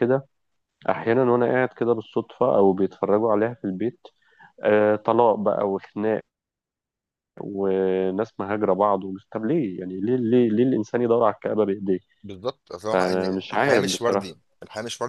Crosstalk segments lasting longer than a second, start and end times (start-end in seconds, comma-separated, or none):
12.9-14.4